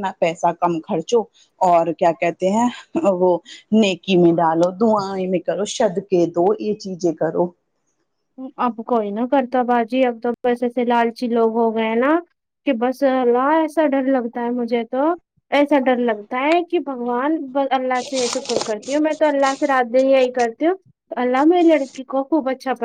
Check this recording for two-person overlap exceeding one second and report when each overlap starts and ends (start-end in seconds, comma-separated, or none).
none